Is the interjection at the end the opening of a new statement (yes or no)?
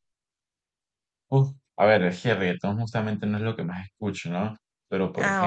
no